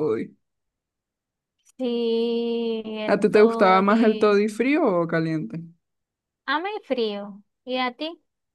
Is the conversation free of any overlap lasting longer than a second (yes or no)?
no